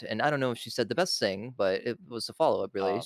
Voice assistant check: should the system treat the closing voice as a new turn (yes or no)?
no